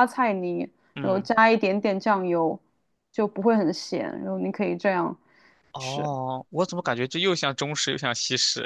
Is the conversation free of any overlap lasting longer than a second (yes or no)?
yes